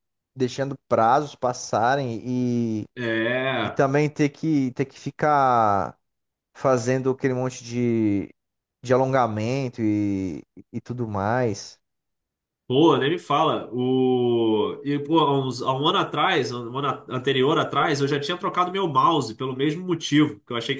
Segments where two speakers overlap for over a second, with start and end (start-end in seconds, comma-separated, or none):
none